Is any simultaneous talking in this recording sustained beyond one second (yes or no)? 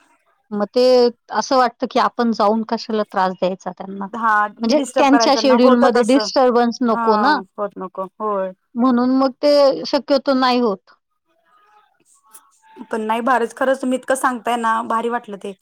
yes